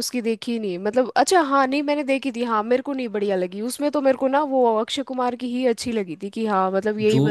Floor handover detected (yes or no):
yes